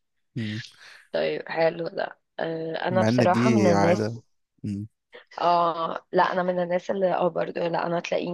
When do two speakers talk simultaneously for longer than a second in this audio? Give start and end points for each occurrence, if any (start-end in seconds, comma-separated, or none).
2.9-4.2